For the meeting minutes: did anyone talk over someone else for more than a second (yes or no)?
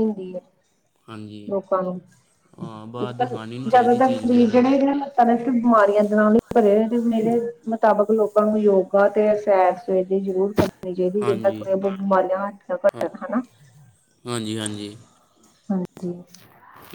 yes